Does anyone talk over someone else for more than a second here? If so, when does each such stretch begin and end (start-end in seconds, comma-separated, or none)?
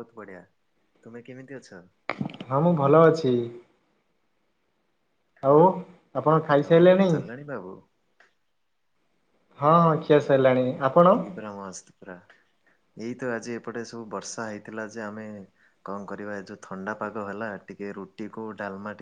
none